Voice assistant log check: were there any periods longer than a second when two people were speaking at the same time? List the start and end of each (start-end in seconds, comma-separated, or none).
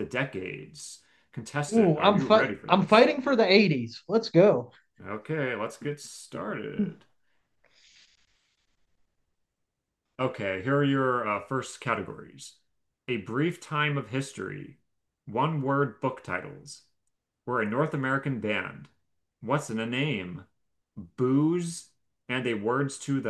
1.7-3.1